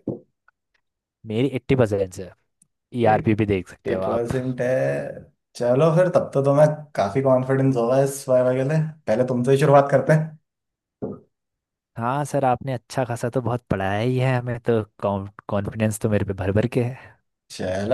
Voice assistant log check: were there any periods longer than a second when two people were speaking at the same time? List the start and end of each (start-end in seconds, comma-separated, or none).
3.0-4.3